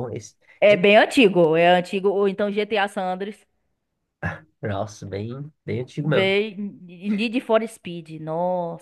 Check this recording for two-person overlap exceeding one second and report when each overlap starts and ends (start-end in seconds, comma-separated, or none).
none